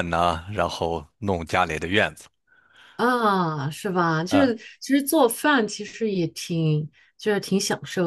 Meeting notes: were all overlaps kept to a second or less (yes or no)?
yes